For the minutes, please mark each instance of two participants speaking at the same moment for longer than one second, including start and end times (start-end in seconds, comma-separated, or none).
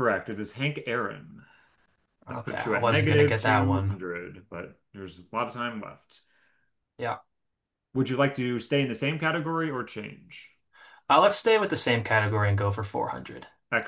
2.3-4.0